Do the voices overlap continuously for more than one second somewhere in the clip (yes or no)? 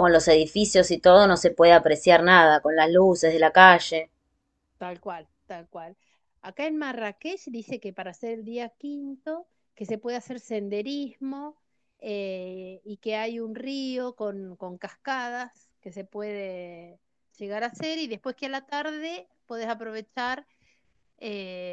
no